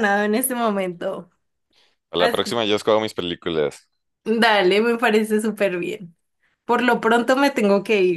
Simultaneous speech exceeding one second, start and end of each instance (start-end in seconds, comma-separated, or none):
none